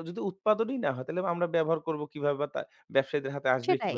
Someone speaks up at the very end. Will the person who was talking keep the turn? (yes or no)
yes